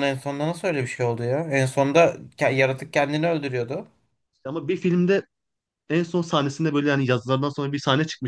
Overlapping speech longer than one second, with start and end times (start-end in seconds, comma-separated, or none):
none